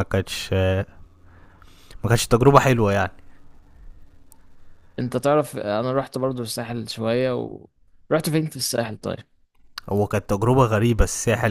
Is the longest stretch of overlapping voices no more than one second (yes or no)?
yes